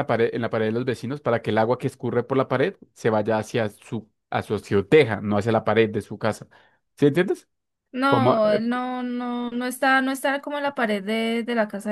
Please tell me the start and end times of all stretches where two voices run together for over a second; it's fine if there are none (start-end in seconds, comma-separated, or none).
none